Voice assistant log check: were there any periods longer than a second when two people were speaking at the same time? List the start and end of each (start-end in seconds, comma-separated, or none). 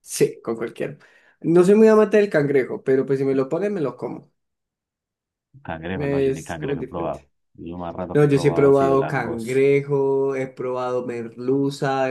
5.9-7.2, 8.1-9.6